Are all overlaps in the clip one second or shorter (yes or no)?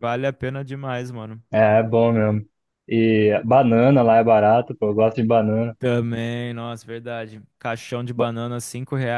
yes